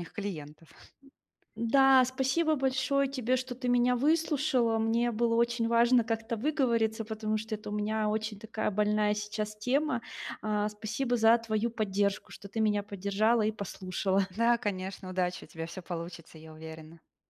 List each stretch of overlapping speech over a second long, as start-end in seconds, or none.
none